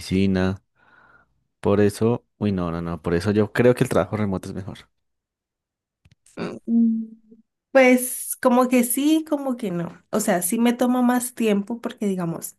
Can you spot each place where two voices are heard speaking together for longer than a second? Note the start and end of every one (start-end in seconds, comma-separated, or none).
none